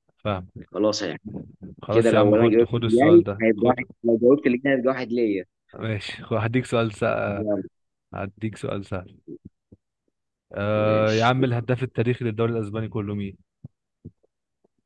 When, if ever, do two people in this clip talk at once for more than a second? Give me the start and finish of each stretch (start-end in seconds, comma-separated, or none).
1.9-3.7